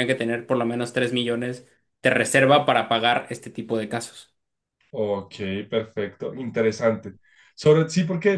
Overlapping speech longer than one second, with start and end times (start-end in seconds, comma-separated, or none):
none